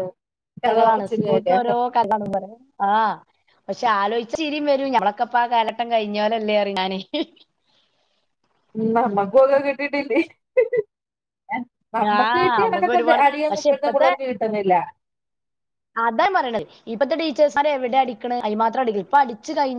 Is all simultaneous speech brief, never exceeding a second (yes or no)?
no